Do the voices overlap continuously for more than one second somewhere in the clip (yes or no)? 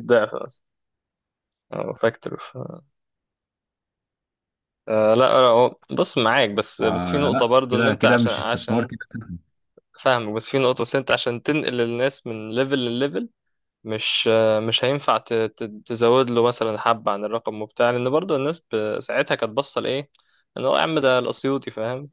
yes